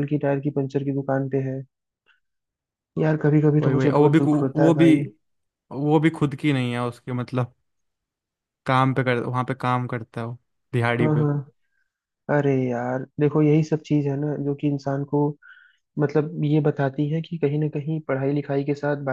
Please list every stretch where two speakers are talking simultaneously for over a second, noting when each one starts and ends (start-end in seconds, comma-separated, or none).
3.6-4.9